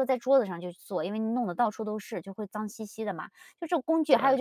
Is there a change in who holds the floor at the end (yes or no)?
no